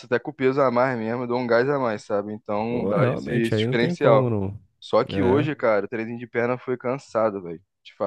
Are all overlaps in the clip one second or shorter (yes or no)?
no